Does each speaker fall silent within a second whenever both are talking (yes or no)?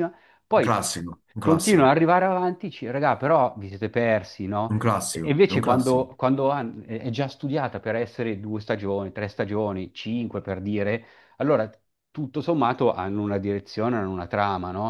no